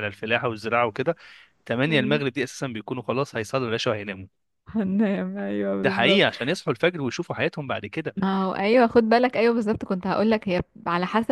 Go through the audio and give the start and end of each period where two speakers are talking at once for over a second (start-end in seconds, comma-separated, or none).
none